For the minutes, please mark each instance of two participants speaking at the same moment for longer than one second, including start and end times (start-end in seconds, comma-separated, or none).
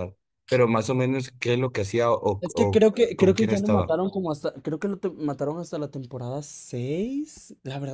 2.4-4.0